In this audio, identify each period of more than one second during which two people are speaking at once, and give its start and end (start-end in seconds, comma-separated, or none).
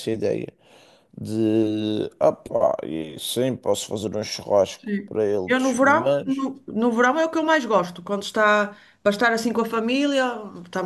4.8-6.5